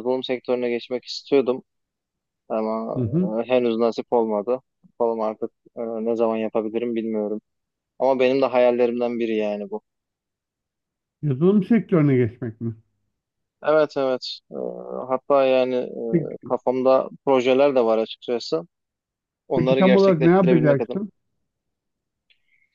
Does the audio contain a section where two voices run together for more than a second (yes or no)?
yes